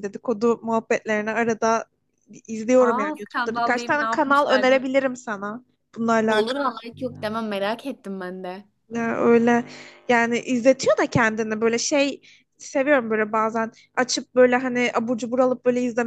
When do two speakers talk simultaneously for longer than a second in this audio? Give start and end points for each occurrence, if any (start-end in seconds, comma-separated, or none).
2.8-4.8